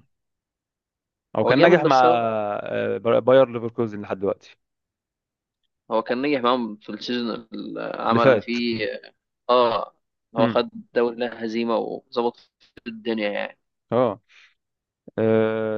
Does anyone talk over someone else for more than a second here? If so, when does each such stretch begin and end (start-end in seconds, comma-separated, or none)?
none